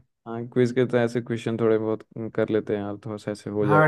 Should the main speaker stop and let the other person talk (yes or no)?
yes